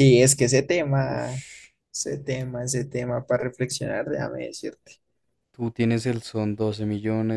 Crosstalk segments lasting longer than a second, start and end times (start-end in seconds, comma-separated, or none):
none